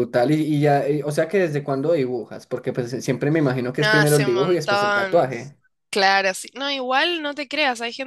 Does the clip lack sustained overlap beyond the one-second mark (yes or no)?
no